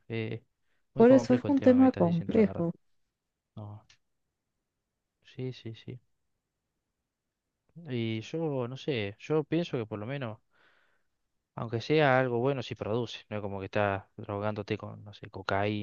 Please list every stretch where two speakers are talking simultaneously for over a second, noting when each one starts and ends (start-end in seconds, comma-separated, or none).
1.0-2.7